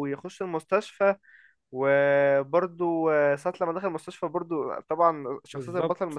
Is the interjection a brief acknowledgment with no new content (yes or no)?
yes